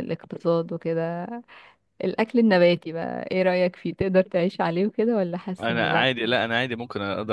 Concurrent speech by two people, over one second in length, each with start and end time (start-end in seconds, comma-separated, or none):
none